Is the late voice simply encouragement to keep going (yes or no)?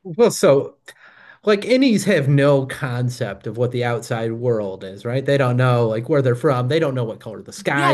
no